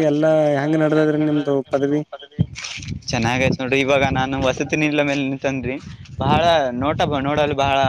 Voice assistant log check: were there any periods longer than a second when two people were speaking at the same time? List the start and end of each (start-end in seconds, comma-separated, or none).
none